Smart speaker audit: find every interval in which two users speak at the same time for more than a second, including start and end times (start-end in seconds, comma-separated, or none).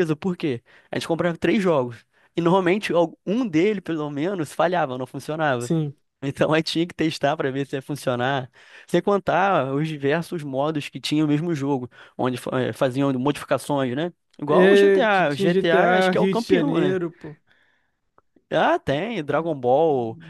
14.5-17.0